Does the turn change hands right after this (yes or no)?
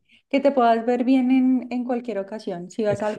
no